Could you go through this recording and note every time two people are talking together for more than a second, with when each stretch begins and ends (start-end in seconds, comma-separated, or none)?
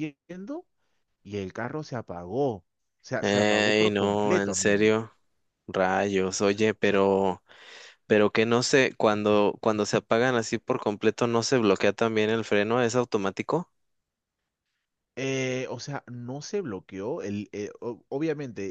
3.2-4.9